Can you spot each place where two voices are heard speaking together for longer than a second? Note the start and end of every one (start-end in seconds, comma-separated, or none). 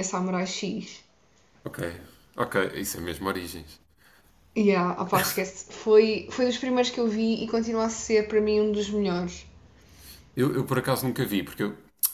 none